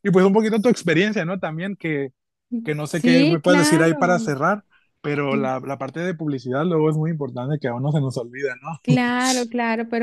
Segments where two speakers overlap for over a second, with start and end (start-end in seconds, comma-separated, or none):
2.9-4.3